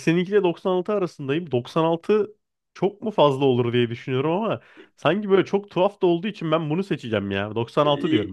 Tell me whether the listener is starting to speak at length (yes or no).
yes